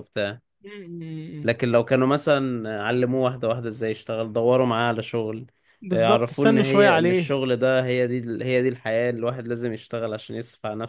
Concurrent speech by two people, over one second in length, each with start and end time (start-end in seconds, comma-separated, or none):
5.9-7.4